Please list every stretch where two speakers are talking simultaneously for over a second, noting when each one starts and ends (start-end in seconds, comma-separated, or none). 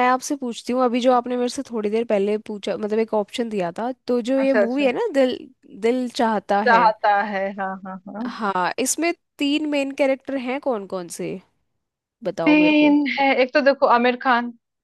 none